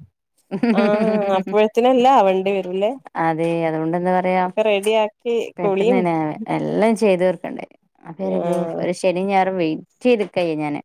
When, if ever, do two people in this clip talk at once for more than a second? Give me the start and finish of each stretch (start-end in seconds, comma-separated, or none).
none